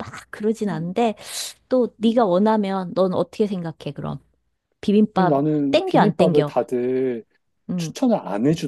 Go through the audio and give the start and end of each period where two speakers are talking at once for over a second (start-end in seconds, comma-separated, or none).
5.1-6.6